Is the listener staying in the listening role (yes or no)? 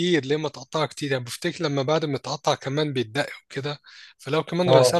yes